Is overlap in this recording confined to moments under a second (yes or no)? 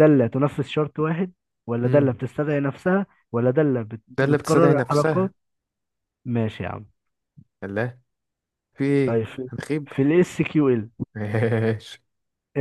no